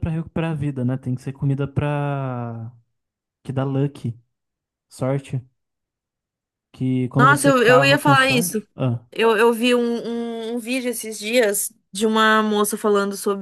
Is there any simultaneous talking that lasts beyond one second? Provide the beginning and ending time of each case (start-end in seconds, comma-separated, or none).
7.2-8.7